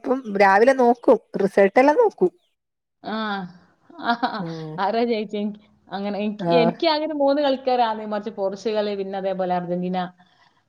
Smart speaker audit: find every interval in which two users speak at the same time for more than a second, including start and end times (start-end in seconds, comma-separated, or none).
none